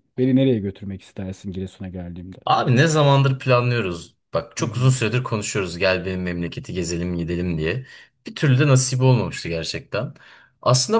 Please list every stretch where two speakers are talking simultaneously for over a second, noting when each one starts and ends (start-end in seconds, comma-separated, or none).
none